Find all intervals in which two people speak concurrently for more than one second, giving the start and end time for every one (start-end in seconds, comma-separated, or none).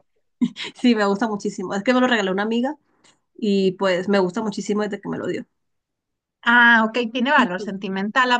none